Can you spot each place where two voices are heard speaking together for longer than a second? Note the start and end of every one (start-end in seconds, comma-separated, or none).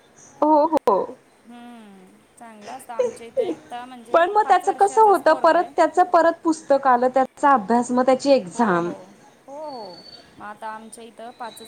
4.1-5.7